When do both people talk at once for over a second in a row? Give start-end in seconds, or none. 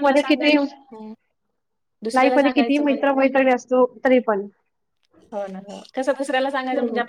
none